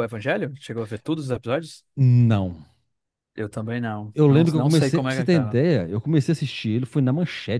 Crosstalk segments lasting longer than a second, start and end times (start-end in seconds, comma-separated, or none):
4.1-5.6